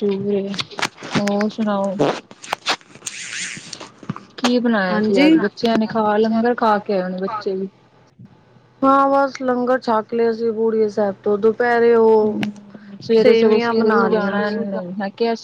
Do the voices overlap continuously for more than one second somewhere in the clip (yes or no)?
yes